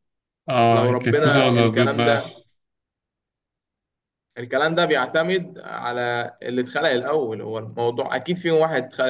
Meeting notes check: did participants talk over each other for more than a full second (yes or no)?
yes